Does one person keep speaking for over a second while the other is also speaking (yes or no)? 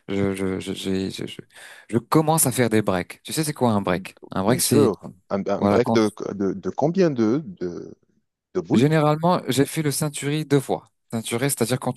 no